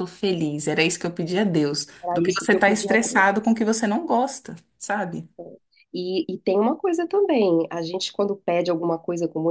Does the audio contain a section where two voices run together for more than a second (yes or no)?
yes